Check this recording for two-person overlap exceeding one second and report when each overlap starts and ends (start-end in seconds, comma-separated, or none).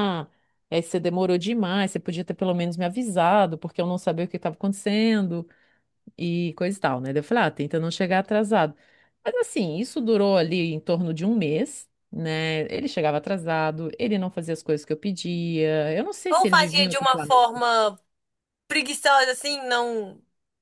16.3-17.6